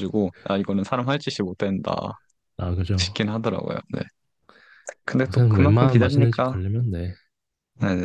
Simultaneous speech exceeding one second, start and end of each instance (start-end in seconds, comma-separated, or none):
5.3-6.5